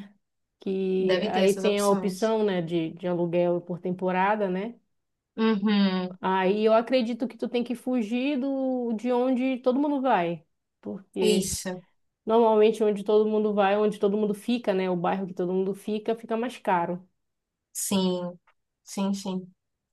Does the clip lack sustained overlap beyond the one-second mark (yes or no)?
no